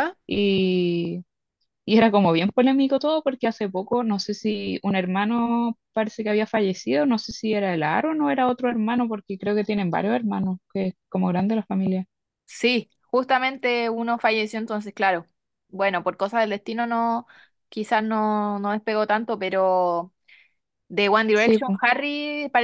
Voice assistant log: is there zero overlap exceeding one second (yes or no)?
yes